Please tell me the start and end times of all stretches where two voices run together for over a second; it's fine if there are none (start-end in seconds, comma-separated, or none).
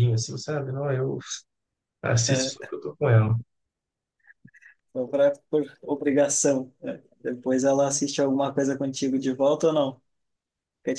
none